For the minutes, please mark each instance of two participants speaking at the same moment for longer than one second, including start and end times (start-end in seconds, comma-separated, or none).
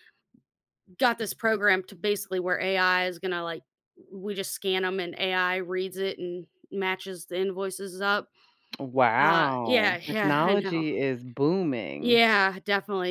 9.2-10.8